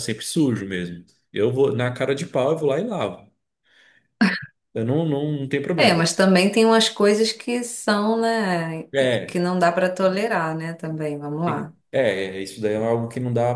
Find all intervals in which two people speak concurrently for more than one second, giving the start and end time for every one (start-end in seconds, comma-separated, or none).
none